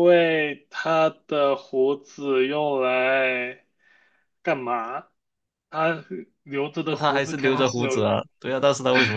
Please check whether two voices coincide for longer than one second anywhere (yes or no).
yes